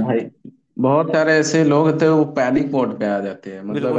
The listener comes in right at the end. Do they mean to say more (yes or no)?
yes